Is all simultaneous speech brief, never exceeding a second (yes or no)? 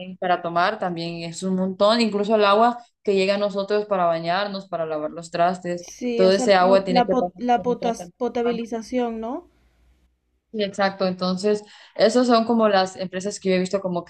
no